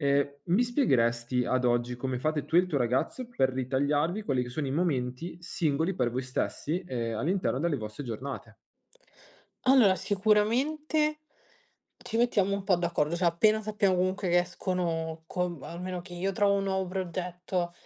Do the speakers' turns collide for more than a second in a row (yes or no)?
no